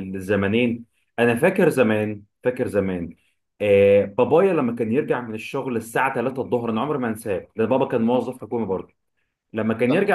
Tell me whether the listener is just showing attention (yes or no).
yes